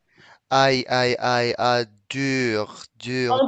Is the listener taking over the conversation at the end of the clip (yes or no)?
yes